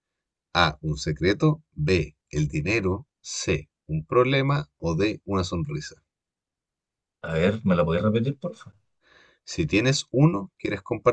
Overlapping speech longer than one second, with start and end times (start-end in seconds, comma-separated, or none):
none